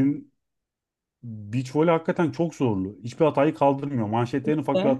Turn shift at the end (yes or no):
no